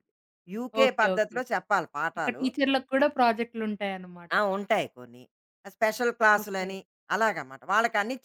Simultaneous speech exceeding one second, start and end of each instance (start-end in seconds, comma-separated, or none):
none